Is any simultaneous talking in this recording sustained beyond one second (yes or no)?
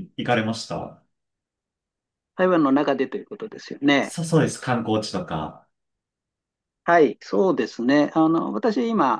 no